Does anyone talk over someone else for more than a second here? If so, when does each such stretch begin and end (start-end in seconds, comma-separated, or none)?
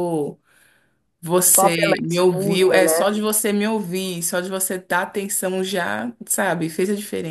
1.4-3.2